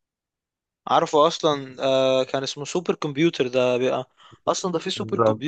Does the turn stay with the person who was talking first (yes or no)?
yes